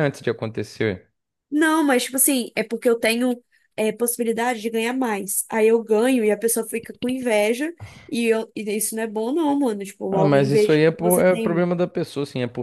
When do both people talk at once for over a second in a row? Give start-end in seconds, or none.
10.1-11.7